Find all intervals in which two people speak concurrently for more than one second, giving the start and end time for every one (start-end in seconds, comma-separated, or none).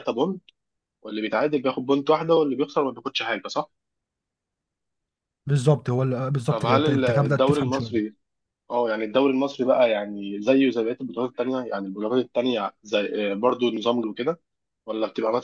6.5-8.1